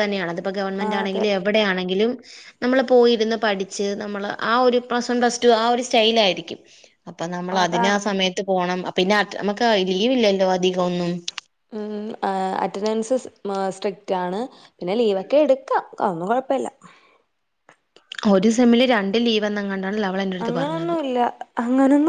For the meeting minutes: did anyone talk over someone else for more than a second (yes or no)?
no